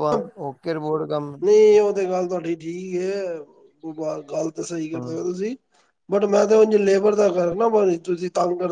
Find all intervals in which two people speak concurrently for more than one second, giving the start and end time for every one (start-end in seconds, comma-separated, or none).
none